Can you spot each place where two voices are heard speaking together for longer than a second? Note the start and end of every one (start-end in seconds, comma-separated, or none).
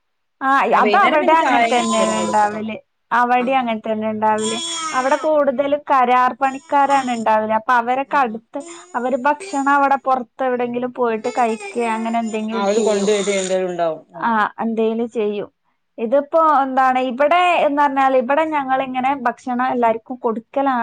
0.9-2.6